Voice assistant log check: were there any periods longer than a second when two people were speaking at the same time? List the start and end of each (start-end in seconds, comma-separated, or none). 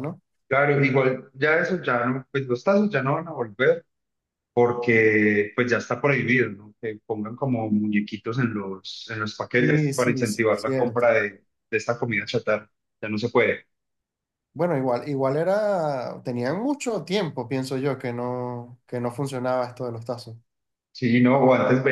9.6-11.1